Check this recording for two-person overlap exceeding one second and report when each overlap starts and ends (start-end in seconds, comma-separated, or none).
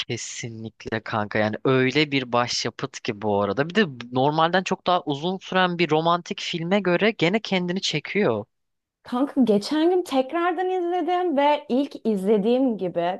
none